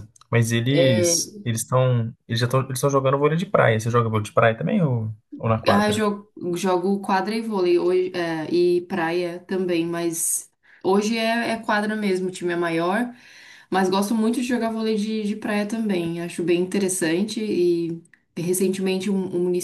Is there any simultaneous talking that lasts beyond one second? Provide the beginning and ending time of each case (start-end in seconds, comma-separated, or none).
none